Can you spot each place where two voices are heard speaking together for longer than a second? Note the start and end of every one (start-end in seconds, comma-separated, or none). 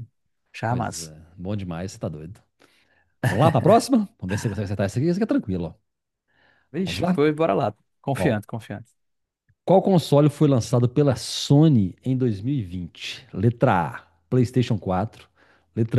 none